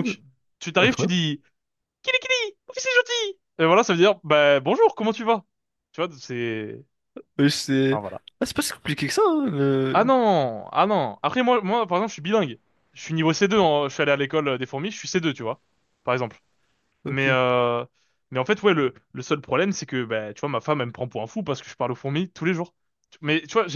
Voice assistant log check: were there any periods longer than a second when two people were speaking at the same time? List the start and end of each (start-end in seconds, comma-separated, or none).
none